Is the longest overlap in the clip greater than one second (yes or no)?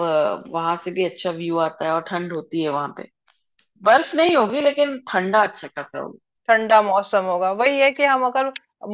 no